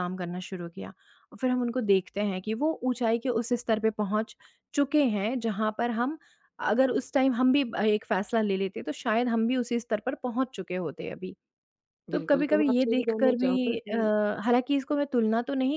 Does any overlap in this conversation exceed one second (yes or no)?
yes